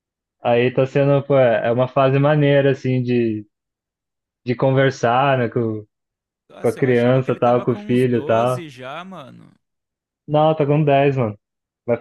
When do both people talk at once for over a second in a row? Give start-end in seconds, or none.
6.6-8.6